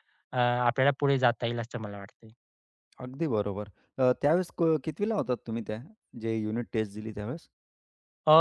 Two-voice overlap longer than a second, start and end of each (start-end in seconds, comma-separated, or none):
none